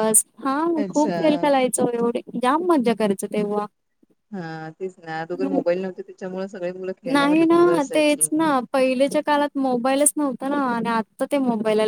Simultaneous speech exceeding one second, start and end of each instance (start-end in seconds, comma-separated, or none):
none